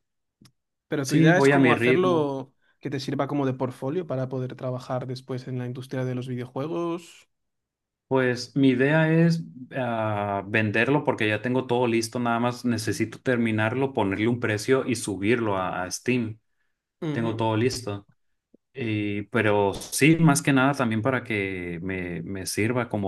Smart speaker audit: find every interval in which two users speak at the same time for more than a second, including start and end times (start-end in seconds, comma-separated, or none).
1.0-2.4